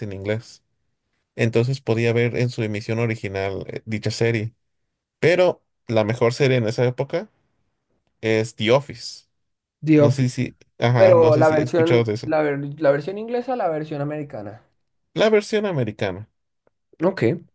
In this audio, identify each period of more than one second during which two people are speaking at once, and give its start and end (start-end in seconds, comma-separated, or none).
10.9-12.3